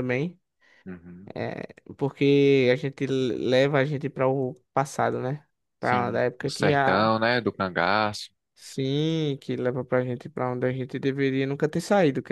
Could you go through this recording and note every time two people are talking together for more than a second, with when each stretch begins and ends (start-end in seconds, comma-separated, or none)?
5.8-7.1